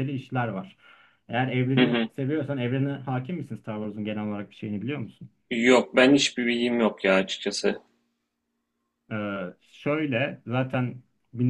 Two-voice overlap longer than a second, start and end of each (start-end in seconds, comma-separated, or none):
none